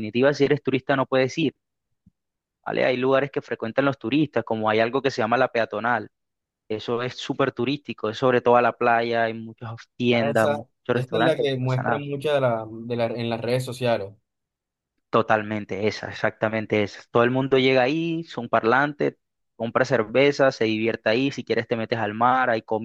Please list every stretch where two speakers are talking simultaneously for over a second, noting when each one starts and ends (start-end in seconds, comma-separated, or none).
10.1-12.0